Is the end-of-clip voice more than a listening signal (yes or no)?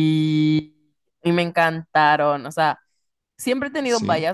no